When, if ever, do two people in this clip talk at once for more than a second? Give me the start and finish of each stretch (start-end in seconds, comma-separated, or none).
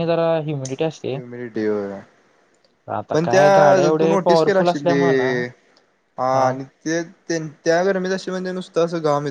3.1-5.3